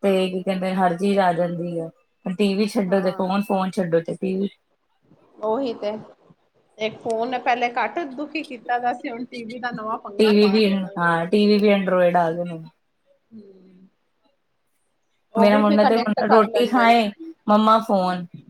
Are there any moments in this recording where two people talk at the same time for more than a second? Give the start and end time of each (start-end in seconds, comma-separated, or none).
15.4-17.0